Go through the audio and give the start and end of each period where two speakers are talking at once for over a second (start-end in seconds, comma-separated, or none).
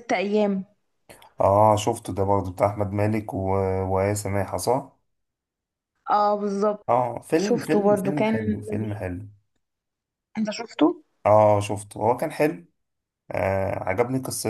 7.4-9.1